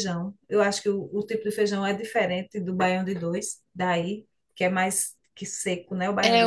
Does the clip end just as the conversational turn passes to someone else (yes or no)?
yes